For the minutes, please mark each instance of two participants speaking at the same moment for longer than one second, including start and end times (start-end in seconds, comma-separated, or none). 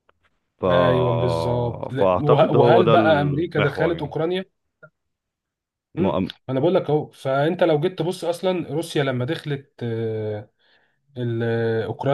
1.9-4.2